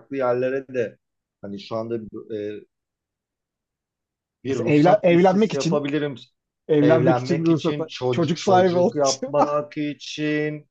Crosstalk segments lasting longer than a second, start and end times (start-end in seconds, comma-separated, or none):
4.5-5.8, 6.8-9.3